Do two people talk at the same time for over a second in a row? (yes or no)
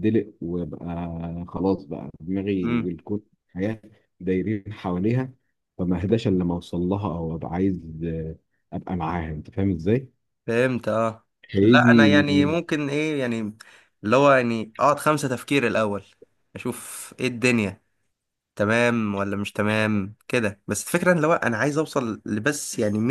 no